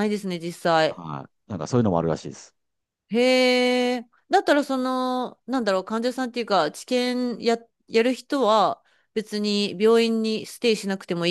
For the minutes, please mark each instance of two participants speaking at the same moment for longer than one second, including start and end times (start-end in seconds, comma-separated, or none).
none